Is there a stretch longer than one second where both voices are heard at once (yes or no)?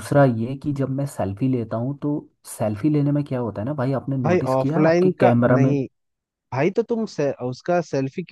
yes